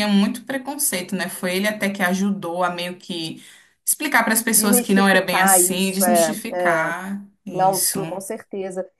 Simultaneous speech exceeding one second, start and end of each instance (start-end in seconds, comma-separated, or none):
4.5-6.9